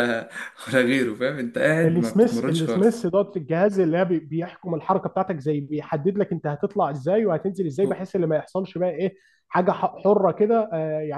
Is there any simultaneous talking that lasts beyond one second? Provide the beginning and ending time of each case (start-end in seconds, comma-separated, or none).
1.8-3.1